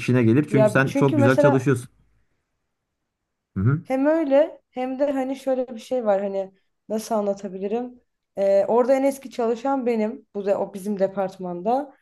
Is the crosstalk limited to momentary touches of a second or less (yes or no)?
no